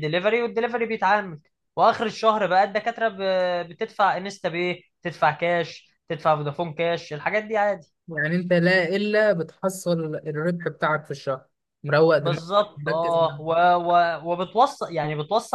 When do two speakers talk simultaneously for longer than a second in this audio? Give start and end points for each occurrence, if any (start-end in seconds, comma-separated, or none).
12.2-13.6